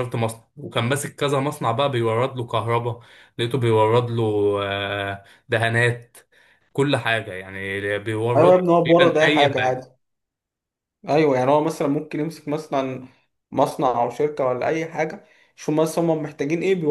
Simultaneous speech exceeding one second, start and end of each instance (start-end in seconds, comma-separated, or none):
8.4-9.9